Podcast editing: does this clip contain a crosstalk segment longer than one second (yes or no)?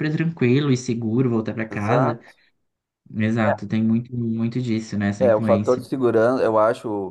no